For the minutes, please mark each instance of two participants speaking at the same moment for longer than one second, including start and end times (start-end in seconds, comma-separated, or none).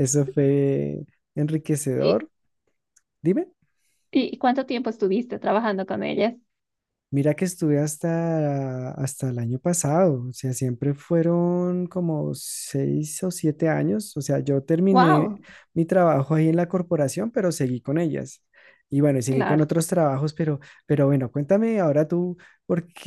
none